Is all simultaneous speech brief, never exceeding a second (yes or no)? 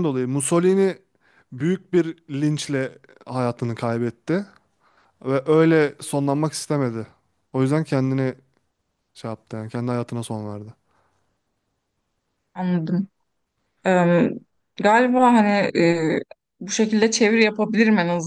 yes